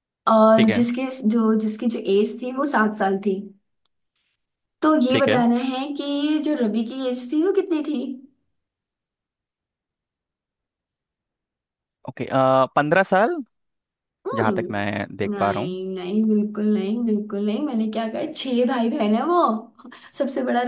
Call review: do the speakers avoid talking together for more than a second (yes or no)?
no